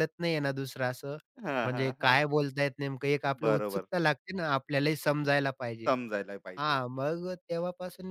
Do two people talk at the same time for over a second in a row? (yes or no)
no